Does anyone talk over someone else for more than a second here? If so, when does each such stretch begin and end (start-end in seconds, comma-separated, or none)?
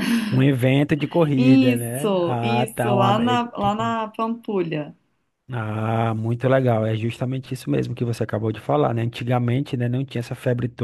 1.3-4.0